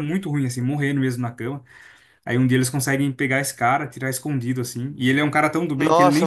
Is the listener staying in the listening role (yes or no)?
no